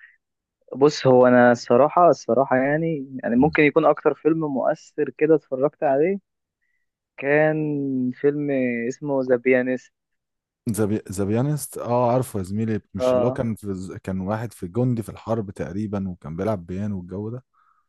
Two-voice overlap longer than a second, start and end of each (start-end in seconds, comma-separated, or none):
none